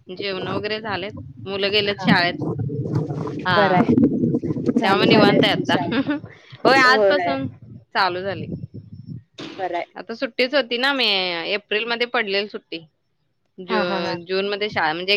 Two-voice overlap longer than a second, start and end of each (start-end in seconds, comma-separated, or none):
4.8-6.1